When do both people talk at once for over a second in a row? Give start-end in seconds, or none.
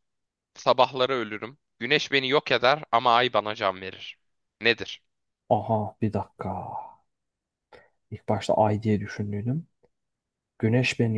none